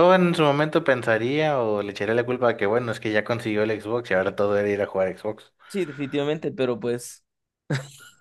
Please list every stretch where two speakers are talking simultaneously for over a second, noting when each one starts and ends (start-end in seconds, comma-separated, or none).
none